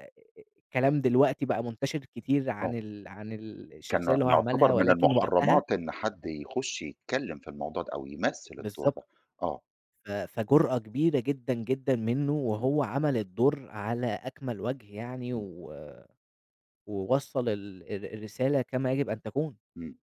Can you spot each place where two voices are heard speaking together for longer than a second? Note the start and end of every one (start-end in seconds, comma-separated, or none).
3.9-5.6